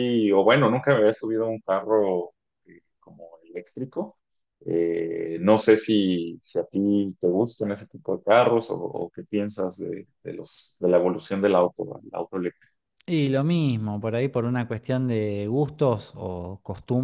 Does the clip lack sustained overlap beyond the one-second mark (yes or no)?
yes